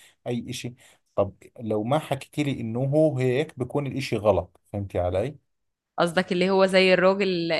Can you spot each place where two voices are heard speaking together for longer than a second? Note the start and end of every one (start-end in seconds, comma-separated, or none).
none